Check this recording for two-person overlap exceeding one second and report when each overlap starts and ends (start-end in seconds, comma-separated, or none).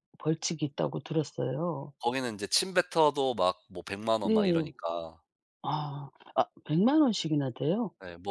none